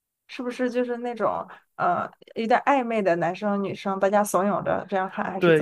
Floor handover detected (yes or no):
yes